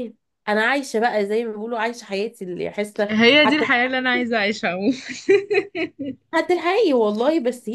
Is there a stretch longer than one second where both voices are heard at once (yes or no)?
no